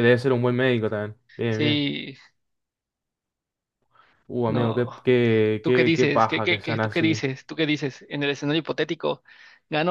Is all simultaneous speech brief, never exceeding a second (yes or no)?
no